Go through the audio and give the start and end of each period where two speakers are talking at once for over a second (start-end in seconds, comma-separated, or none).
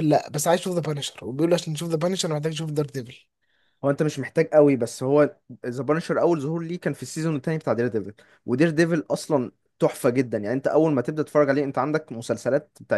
none